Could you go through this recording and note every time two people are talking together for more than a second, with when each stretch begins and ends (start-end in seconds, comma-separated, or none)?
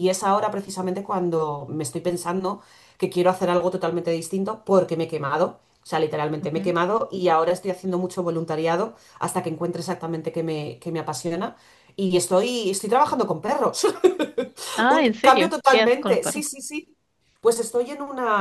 14.9-16.4